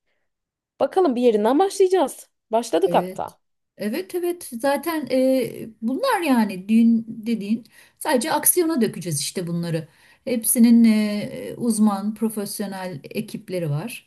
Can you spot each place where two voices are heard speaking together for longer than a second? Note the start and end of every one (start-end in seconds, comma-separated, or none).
none